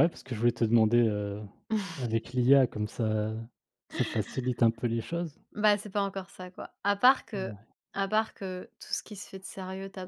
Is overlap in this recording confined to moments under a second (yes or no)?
yes